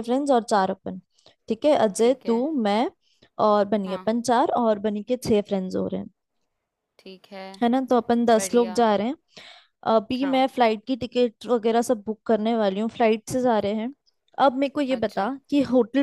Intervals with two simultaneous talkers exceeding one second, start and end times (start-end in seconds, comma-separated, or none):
none